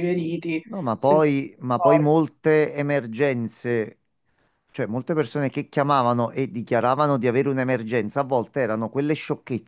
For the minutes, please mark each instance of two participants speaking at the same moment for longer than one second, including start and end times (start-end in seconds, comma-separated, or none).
0.6-2.1